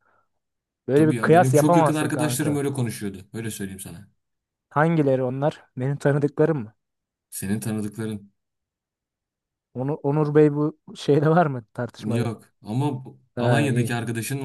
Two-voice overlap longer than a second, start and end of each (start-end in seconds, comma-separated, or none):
0.9-2.7